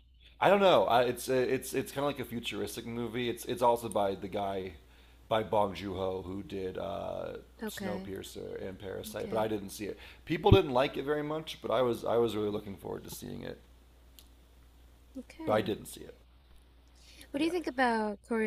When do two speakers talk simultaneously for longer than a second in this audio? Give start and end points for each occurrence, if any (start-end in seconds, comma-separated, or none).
none